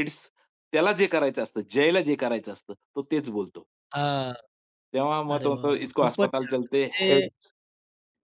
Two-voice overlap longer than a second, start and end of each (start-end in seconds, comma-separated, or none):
5.3-7.3